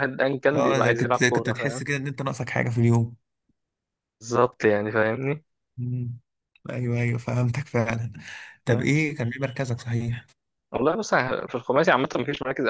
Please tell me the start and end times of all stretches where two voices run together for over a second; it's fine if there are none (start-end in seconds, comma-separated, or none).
0.5-1.8